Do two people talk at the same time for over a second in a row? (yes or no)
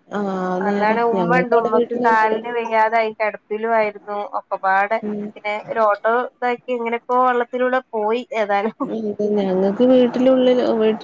yes